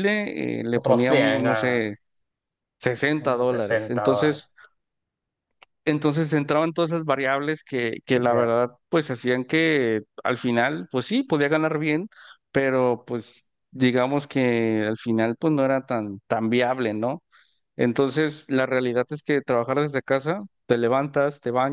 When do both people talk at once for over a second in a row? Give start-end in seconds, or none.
0.7-1.9, 3.2-4.4